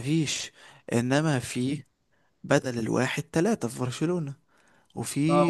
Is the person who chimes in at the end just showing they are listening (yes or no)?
no